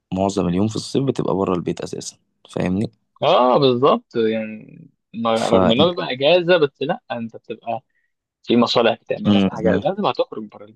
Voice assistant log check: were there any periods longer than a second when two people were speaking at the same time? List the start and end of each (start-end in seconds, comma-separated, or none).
none